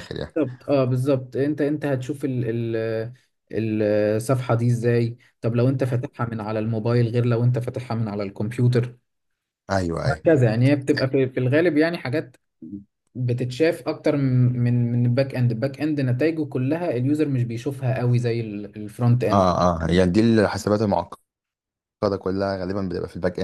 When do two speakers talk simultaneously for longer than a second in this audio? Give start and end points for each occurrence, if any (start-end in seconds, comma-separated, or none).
none